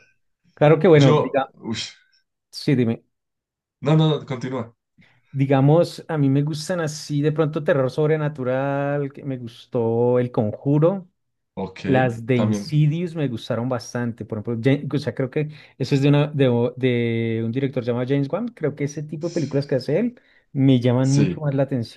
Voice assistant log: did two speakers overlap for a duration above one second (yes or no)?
no